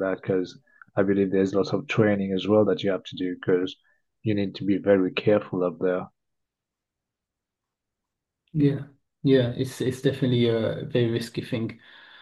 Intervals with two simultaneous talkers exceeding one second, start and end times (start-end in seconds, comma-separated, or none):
none